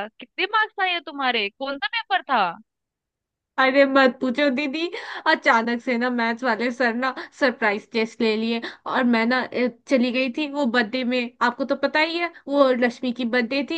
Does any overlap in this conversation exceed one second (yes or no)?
no